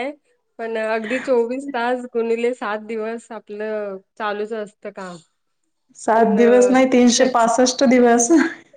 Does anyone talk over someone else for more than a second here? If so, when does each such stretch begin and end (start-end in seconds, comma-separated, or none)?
6.1-7.5